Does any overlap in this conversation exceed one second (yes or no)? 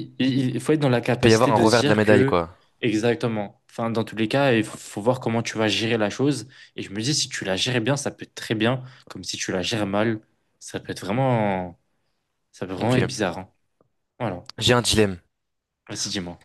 yes